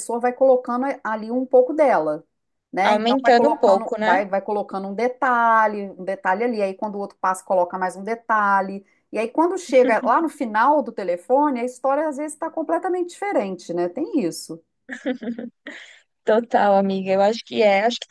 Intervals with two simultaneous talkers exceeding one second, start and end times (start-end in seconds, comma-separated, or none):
2.8-4.2